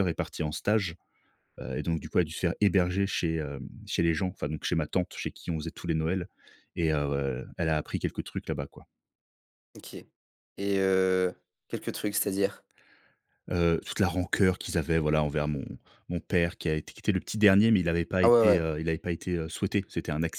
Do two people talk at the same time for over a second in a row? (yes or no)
no